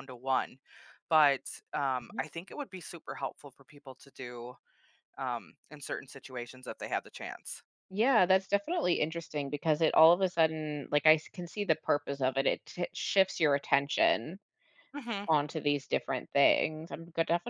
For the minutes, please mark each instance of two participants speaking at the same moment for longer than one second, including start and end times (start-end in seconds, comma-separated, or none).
none